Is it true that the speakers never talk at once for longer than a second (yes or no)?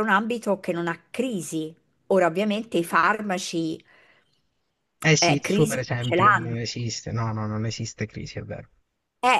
no